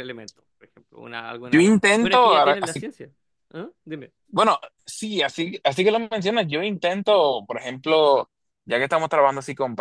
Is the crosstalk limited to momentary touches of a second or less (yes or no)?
no